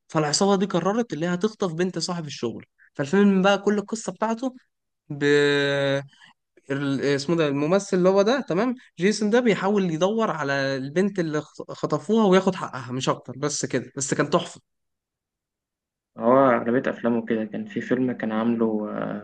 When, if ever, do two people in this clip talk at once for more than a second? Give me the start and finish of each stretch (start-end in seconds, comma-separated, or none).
none